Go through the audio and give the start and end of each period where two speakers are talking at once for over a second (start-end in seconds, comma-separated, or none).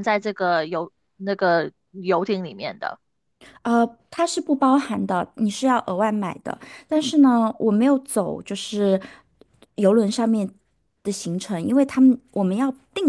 none